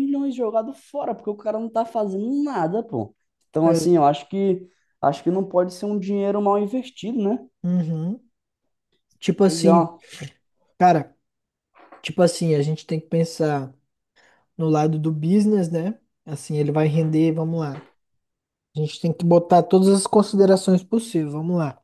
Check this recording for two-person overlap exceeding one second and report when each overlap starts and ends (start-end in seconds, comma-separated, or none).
none